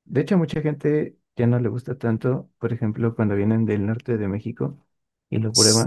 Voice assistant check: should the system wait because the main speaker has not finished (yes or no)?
yes